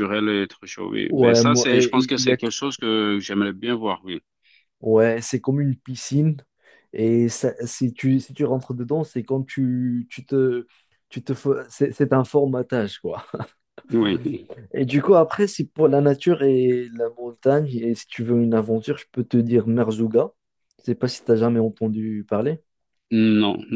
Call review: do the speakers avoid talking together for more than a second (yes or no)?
no